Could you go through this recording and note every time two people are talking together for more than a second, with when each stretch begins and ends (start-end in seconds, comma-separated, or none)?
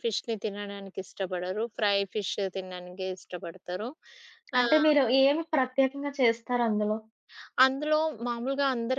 none